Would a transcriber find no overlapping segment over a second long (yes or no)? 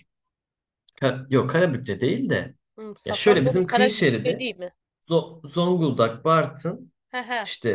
no